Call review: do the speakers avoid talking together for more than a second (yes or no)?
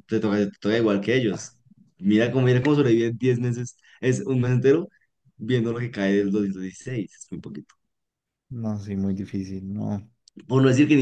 yes